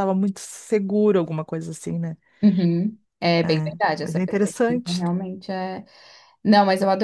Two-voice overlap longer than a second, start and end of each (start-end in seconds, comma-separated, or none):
3.4-5.0